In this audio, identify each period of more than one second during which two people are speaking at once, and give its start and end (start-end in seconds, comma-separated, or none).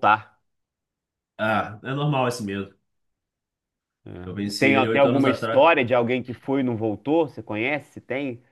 4.2-5.6